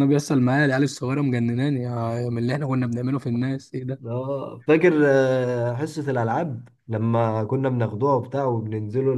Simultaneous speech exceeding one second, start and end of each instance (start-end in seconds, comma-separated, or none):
none